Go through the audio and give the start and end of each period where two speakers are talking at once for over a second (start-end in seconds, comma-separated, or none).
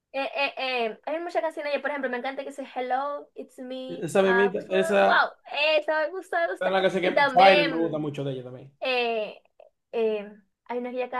3.9-5.3, 6.6-8.0